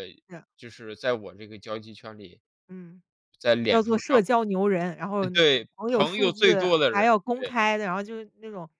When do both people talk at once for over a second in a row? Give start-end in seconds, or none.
5.2-7.5